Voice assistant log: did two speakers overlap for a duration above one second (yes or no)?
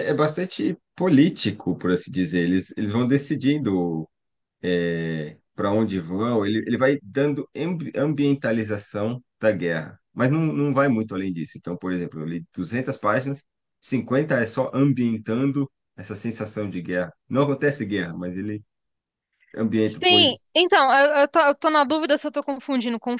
no